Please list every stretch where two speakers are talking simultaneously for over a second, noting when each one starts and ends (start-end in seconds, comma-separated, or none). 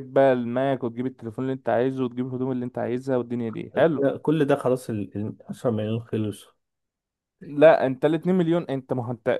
none